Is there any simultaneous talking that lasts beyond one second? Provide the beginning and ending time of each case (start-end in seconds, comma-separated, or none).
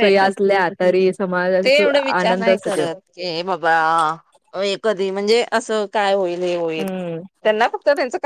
1.2-2.9